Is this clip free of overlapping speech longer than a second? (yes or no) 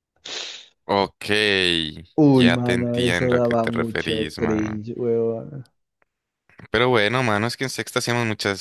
no